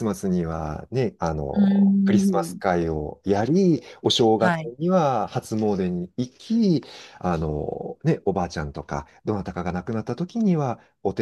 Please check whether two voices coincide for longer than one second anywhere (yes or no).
yes